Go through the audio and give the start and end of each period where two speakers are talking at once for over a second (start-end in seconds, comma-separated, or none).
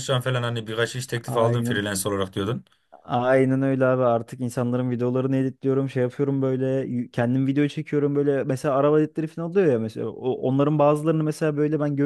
none